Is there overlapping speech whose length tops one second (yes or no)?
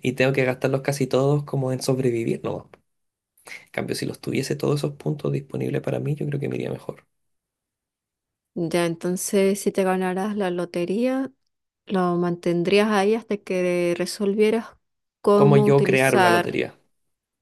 yes